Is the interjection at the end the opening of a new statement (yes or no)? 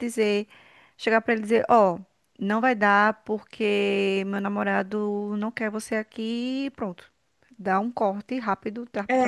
yes